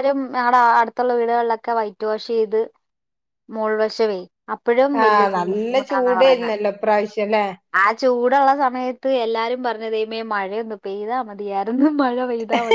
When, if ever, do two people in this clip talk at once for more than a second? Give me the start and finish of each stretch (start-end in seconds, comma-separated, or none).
5.0-6.5